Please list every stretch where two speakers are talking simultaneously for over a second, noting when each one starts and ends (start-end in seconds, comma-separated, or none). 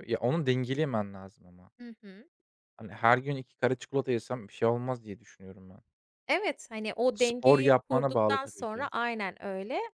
7.1-8.9